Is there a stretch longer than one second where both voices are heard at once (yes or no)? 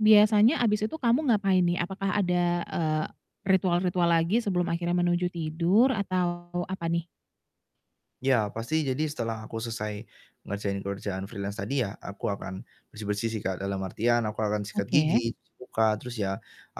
no